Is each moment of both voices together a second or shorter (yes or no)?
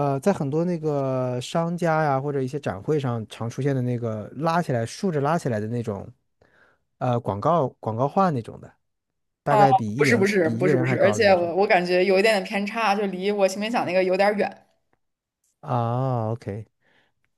no